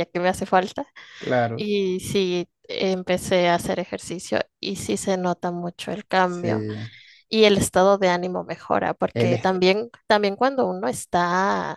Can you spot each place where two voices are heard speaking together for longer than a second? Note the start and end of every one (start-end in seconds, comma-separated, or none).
none